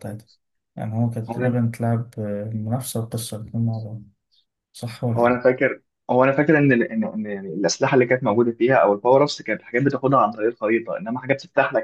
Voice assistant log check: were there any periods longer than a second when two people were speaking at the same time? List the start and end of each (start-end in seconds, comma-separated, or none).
none